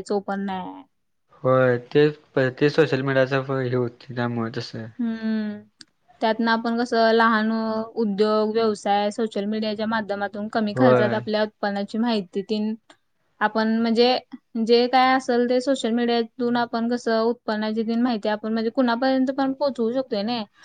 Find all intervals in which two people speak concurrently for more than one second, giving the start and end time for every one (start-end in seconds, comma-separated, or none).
none